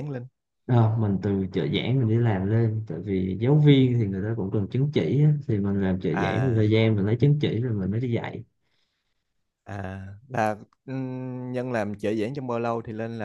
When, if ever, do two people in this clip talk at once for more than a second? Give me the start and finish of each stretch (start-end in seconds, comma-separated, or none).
none